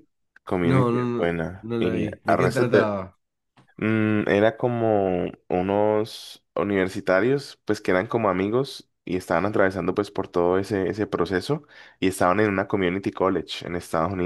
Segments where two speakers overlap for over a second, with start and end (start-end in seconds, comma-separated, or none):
0.6-2.9